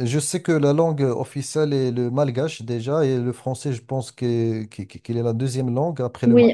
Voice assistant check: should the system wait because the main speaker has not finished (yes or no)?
no